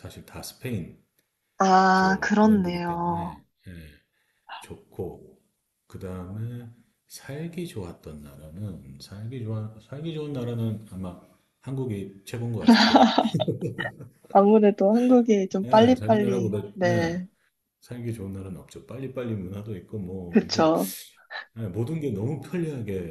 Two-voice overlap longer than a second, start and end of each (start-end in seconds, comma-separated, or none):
1.9-3.4, 15.6-17.1